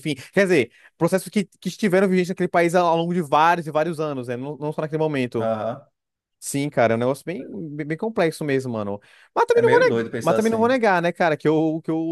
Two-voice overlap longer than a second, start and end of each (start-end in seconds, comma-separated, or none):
9.5-10.7